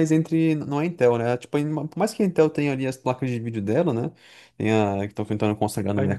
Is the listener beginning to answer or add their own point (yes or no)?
no